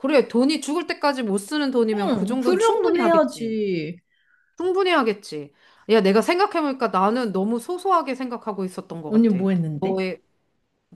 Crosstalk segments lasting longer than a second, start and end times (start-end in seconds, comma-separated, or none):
1.9-3.5